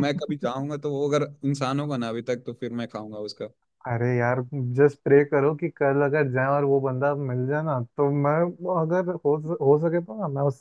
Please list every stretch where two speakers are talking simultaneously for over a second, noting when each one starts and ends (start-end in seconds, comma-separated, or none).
none